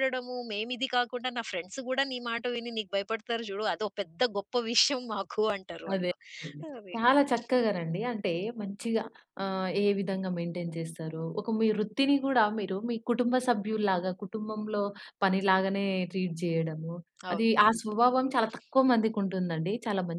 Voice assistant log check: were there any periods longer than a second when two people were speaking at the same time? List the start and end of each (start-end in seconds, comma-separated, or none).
none